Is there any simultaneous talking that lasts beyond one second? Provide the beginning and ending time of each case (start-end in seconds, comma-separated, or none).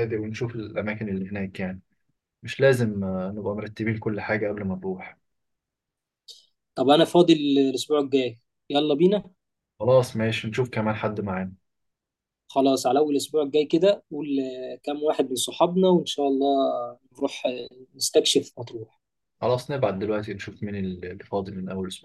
none